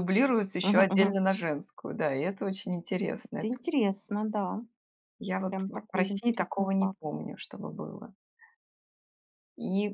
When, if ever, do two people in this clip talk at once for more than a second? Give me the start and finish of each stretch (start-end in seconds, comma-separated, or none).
5.5-7.0